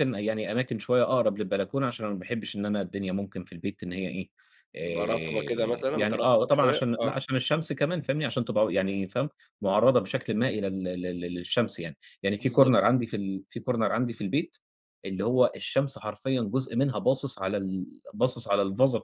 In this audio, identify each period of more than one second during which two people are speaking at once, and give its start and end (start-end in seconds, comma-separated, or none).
4.8-7.1